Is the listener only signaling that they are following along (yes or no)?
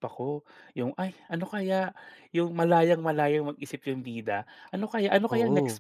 yes